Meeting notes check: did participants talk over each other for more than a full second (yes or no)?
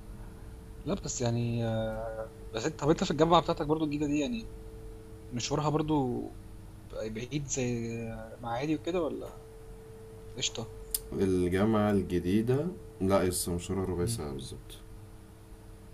no